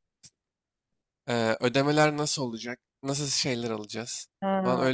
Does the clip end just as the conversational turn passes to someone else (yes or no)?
yes